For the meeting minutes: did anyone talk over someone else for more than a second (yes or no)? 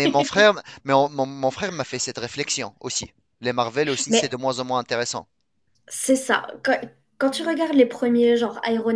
no